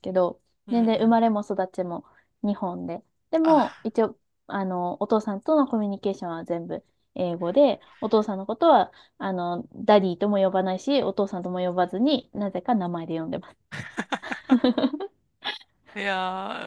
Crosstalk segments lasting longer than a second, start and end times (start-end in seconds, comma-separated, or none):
none